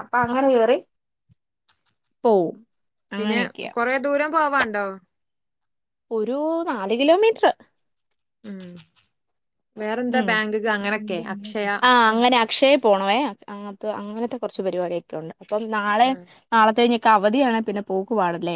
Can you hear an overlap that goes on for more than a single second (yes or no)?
no